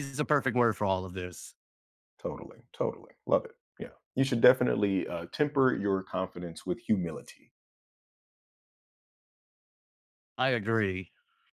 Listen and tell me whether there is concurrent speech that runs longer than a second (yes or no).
no